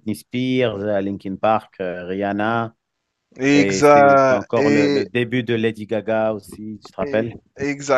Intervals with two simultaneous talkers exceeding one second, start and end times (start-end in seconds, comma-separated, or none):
3.5-5.1